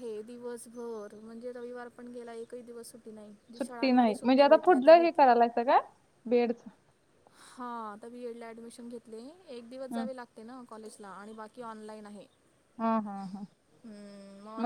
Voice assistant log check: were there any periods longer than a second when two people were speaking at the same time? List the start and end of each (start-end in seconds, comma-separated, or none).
3.6-5.3